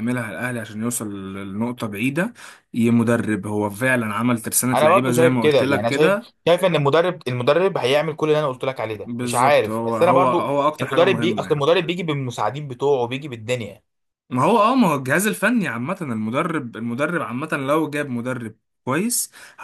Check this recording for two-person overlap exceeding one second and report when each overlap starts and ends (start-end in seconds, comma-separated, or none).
4.7-6.3, 9.0-11.7